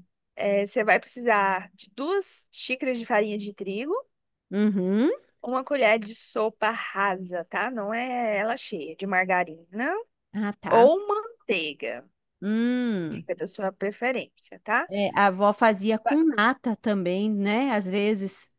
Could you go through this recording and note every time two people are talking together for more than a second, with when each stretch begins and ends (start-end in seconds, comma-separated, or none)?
none